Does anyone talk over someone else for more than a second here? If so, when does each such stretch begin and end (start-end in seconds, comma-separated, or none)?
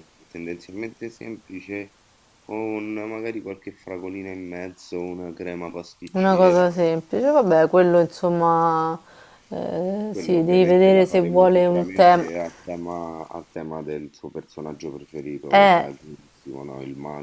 10.1-12.2